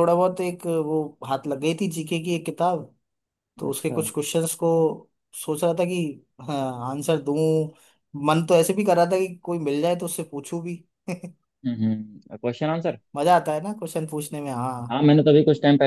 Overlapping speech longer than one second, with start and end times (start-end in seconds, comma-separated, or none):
none